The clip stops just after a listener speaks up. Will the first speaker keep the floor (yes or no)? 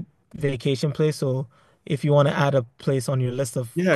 no